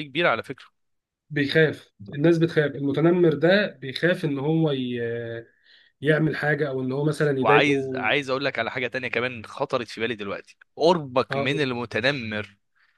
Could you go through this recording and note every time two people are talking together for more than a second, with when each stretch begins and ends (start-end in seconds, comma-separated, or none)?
none